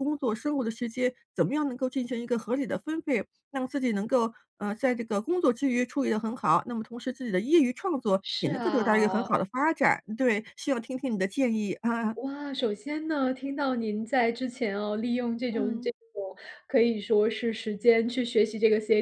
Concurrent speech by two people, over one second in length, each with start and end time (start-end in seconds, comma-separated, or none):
8.2-9.4